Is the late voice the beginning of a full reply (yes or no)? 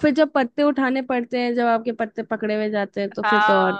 yes